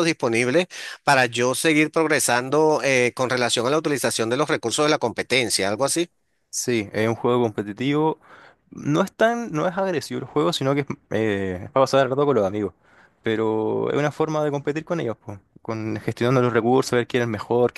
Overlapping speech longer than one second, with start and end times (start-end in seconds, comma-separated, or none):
none